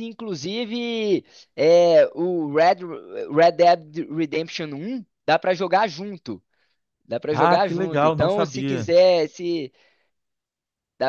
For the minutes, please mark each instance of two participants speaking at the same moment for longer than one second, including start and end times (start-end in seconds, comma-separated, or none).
7.3-8.9